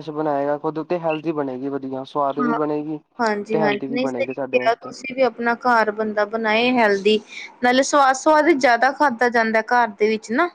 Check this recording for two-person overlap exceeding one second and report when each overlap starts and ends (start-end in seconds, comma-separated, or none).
3.5-4.9